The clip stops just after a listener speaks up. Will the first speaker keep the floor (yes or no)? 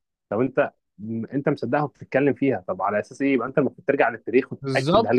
no